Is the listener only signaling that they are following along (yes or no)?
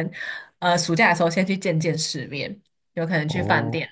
yes